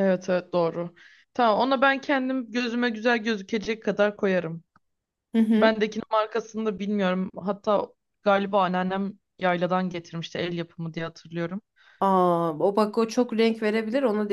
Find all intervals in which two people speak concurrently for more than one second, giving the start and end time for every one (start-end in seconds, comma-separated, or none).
none